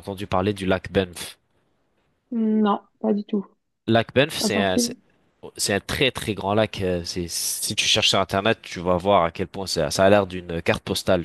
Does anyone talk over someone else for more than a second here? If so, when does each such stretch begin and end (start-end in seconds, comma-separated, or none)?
none